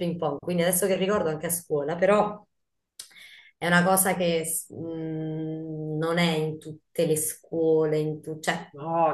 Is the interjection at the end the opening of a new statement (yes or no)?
yes